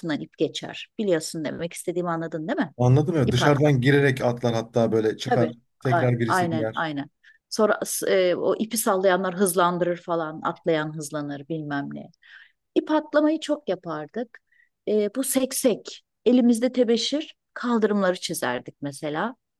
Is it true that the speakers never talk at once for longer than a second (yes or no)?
no